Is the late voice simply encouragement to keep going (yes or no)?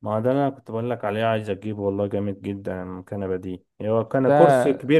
yes